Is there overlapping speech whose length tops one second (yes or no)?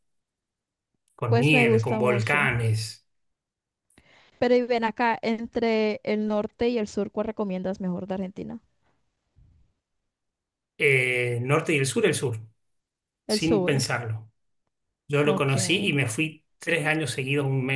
yes